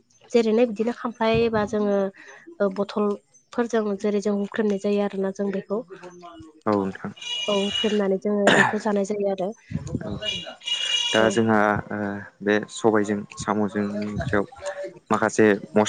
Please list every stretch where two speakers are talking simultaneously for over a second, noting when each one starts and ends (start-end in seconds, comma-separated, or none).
none